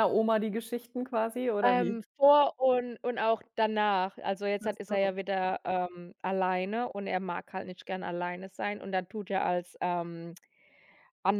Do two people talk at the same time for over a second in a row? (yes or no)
no